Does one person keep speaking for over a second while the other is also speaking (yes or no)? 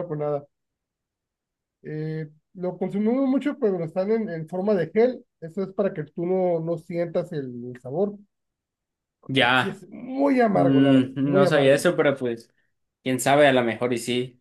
yes